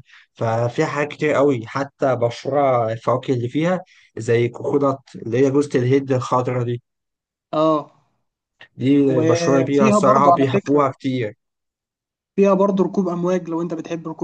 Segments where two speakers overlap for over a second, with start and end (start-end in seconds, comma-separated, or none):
9.1-10.8